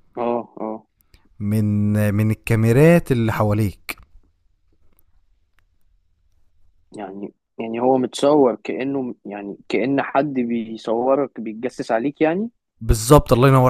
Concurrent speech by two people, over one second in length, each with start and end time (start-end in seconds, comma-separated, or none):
none